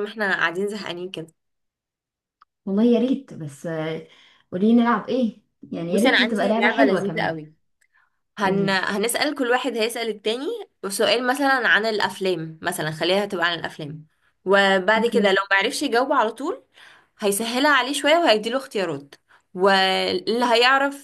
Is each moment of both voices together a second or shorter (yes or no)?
no